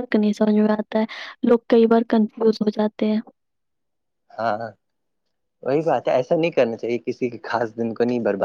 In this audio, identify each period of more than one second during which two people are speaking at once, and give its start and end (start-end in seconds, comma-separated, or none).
none